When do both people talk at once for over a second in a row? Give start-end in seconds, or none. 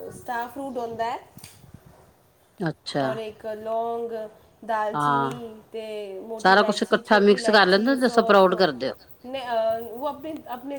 6.4-8.5